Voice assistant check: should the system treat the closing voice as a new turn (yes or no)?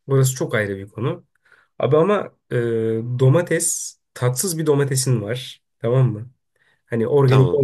no